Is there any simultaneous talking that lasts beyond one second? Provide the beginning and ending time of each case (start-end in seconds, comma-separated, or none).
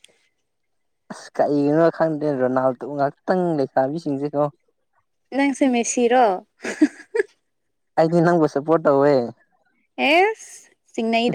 none